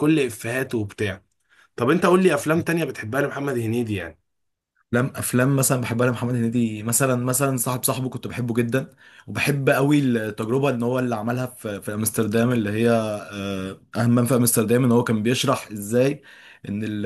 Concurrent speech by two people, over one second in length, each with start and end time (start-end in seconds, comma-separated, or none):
none